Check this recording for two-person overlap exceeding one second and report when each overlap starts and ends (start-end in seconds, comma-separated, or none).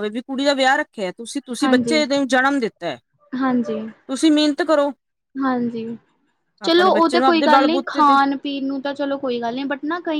6.6-8.2